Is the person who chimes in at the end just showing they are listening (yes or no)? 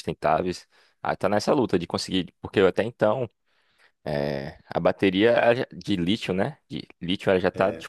yes